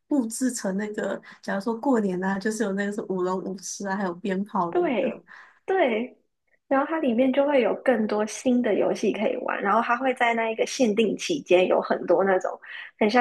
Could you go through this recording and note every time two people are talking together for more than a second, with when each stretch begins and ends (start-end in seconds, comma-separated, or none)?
none